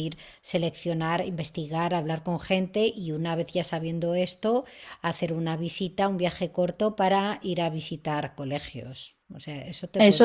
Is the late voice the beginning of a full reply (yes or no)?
yes